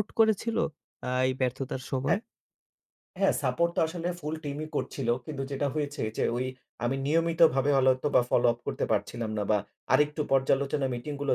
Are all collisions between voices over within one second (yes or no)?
yes